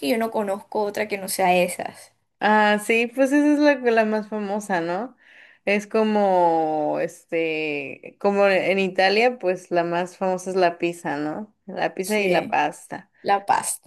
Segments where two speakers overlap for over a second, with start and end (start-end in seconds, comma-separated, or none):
none